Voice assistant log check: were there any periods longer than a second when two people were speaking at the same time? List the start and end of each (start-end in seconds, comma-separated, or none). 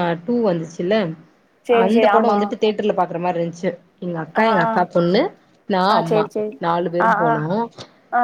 none